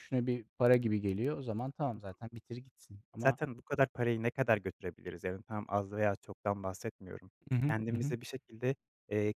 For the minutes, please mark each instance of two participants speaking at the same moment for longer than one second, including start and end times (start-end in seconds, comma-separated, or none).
none